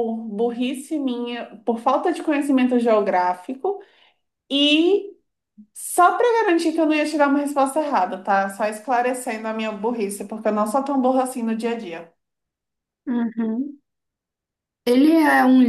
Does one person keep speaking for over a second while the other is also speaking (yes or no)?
no